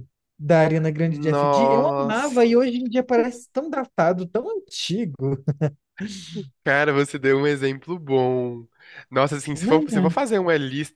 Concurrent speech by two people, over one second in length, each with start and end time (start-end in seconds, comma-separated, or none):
1.0-2.5